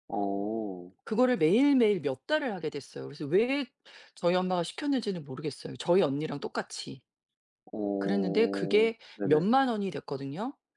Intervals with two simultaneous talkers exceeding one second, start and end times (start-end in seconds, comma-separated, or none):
8.0-9.5